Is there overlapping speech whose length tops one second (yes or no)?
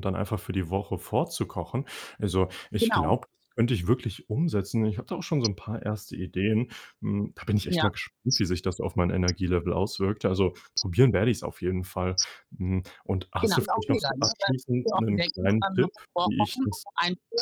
yes